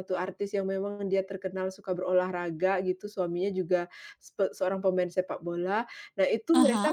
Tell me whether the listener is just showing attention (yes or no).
yes